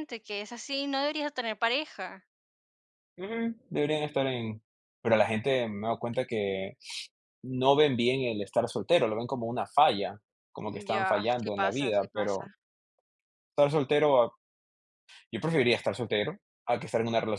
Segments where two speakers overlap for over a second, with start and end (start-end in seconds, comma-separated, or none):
10.9-12.4